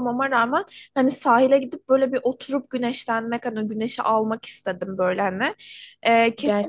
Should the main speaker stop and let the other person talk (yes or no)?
no